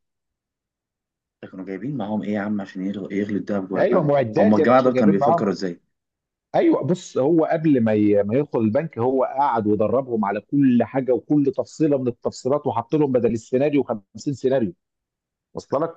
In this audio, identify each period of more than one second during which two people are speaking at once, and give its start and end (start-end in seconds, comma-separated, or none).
3.8-5.5